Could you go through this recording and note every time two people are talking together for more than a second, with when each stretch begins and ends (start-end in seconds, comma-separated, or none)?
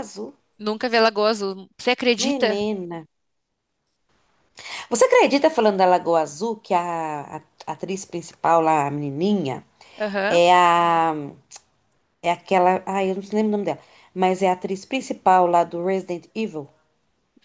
none